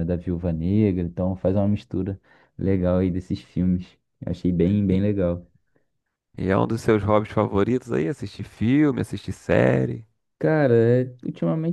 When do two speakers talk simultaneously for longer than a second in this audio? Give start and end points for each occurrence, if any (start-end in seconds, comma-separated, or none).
none